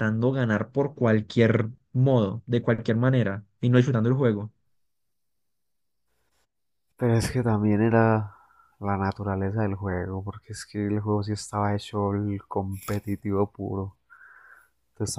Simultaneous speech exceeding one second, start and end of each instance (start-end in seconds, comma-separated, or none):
none